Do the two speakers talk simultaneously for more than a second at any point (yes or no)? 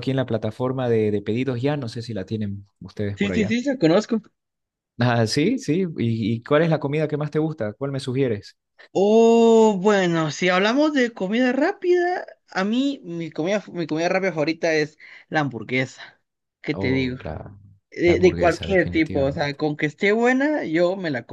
yes